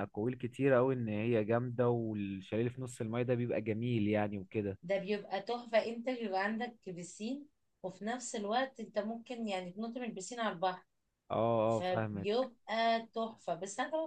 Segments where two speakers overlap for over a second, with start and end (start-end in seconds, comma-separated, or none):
none